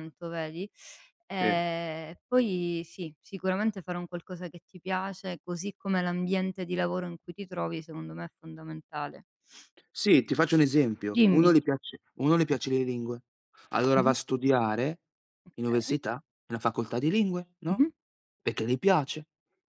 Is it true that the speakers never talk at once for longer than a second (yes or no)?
yes